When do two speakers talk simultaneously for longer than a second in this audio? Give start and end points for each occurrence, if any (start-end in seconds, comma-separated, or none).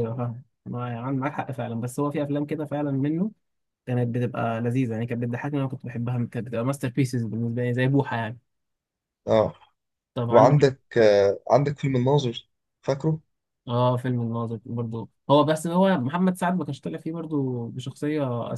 none